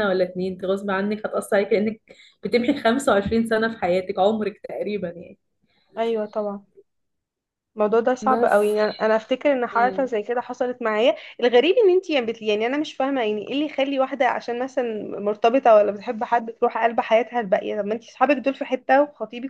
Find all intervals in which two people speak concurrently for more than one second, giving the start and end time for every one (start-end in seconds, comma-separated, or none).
none